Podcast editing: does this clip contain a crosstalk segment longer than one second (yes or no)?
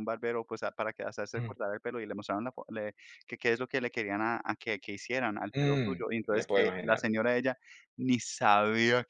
yes